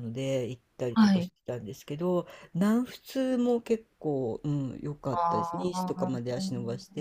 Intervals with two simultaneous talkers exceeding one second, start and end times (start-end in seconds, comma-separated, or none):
5.1-6.4